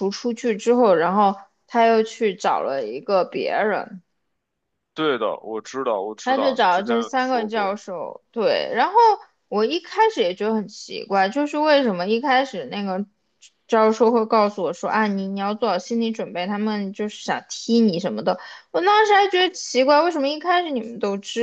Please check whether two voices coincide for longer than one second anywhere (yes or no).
yes